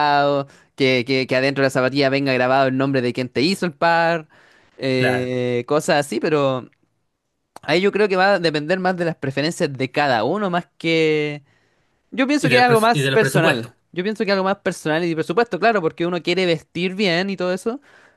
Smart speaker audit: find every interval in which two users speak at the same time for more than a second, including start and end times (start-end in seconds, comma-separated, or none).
12.4-13.7